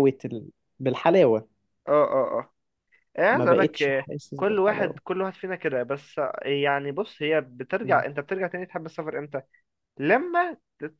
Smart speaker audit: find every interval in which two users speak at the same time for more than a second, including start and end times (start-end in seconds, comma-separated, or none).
3.3-5.0